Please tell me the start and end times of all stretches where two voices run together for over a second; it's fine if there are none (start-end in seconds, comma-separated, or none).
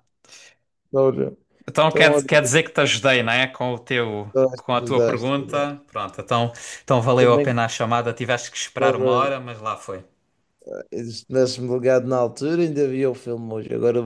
4.3-5.8